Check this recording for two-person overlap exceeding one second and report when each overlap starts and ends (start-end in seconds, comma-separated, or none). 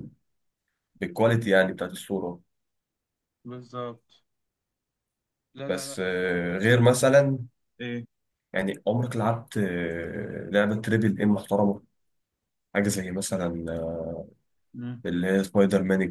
5.7-7.0